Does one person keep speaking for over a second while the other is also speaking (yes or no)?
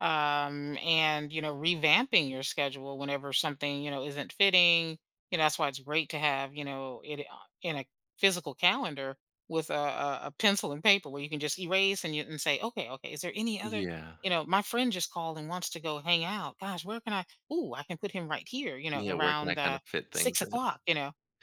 yes